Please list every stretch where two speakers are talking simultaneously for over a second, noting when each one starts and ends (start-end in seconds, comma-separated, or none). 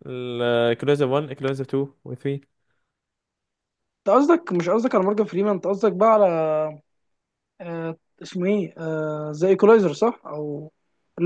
none